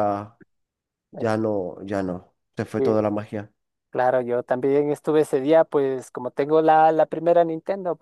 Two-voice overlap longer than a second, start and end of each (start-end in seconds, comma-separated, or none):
none